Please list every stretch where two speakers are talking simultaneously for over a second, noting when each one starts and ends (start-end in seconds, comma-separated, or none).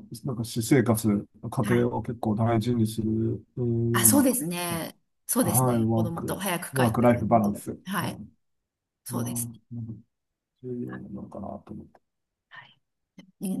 5.4-8.2